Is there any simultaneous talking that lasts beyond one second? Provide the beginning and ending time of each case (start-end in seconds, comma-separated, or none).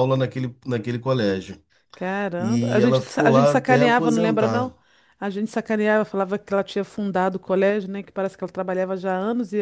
2.4-4.7